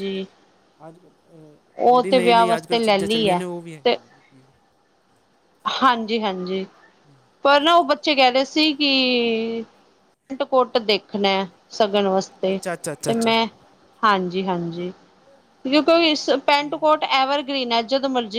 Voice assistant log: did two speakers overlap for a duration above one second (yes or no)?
yes